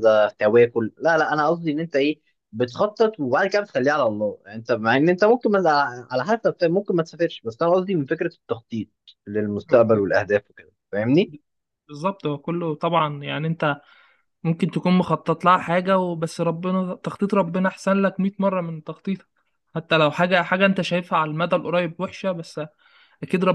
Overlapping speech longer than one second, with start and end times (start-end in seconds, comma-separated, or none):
none